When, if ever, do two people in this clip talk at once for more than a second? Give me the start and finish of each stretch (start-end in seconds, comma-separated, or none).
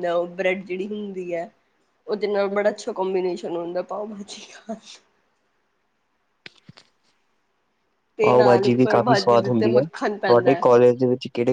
8.3-10.8